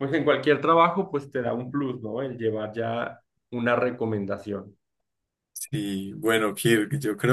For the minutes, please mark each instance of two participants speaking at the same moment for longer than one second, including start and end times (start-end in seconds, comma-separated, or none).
none